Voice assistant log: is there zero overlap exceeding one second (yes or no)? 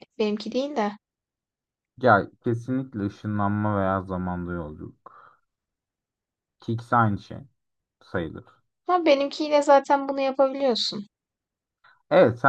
yes